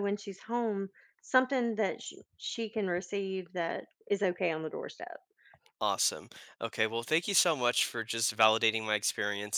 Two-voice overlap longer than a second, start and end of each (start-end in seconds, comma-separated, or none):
none